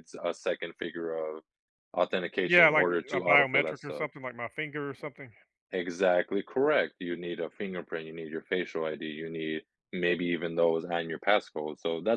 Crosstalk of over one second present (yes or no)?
yes